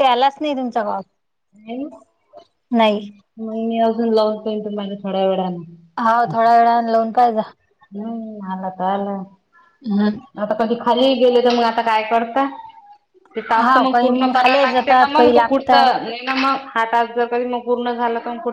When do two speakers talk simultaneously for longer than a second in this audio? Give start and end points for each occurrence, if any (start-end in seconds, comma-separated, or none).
13.6-16.1